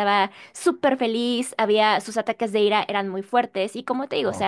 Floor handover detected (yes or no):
no